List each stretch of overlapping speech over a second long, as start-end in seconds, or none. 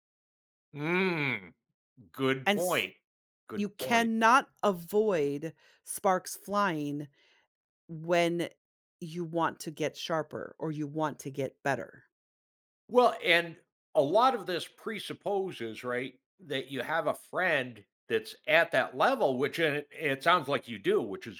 none